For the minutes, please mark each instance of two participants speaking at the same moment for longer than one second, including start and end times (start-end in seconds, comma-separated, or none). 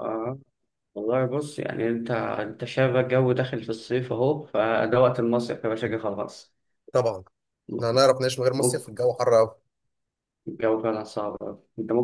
none